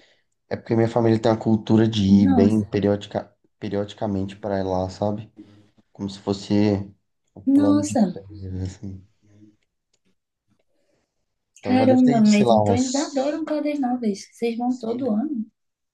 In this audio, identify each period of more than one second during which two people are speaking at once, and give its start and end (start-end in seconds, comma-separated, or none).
11.7-13.4